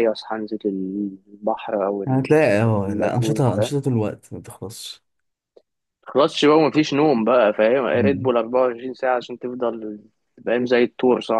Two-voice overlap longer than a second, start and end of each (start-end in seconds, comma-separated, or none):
none